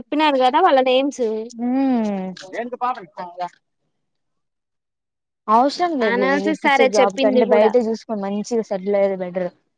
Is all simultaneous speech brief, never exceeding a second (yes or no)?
no